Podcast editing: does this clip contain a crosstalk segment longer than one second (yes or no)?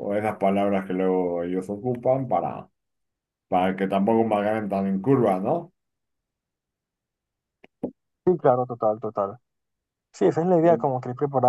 no